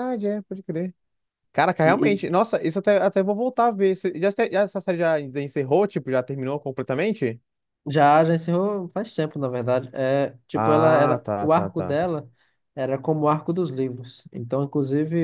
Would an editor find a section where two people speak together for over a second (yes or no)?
yes